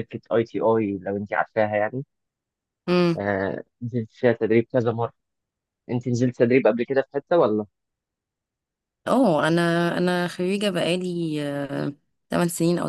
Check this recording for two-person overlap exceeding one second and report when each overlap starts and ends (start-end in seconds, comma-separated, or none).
none